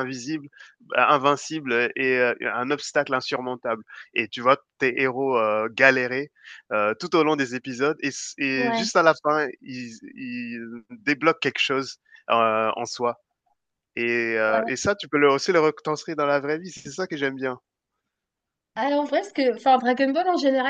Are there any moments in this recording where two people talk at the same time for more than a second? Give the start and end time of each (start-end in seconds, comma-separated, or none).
none